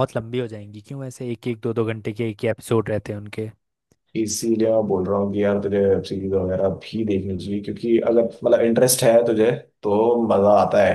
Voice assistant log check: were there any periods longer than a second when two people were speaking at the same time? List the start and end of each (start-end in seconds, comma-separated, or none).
none